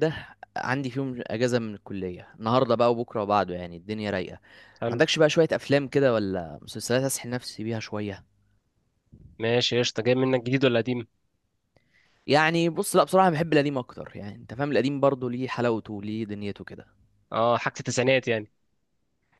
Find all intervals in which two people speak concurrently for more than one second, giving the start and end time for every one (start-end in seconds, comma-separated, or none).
none